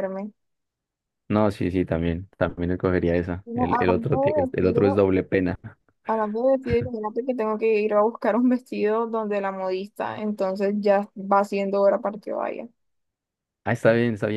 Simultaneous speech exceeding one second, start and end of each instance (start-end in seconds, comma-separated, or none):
3.4-5.0